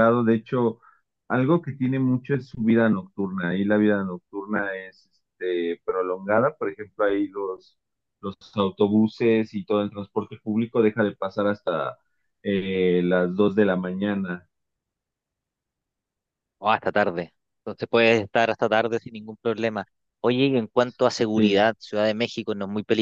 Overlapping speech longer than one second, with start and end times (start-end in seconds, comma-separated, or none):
none